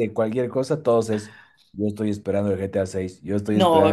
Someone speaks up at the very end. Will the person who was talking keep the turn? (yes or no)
no